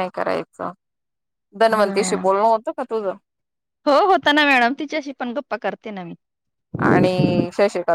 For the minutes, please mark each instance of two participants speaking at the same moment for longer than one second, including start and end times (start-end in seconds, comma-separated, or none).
none